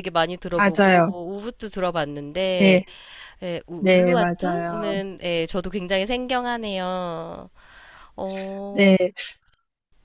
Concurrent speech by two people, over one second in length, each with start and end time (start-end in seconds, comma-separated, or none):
3.8-5.0